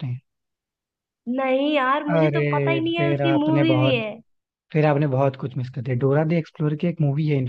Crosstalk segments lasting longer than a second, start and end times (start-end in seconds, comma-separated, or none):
2.1-4.0